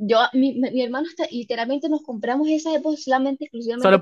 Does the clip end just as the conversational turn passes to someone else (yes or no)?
yes